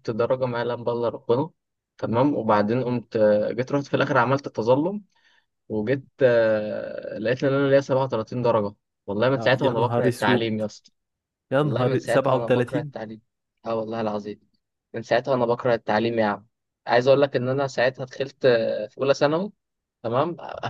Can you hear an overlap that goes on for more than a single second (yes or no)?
yes